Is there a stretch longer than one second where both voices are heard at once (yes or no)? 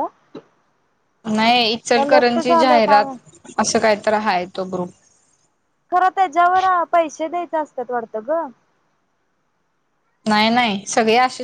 yes